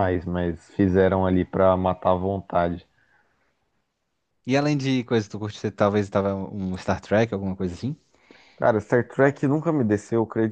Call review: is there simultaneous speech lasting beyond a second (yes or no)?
no